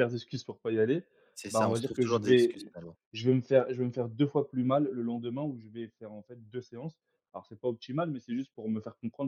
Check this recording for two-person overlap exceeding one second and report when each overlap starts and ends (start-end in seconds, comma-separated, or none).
1.5-2.7